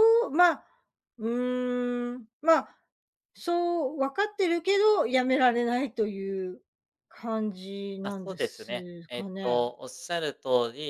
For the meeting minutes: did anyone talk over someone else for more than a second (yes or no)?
yes